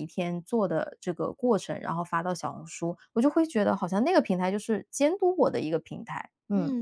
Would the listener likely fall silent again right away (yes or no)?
no